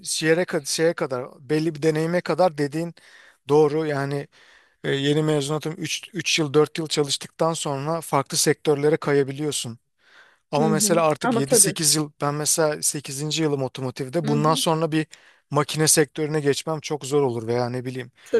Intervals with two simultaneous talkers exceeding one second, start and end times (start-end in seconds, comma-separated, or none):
10.6-11.8